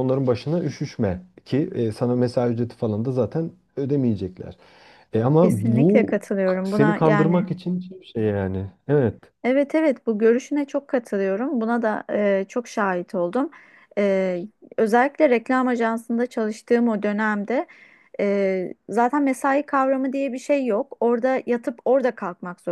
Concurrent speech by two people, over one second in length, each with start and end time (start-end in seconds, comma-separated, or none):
5.4-7.5